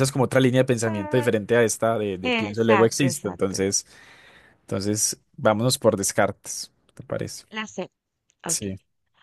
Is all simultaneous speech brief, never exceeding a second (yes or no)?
no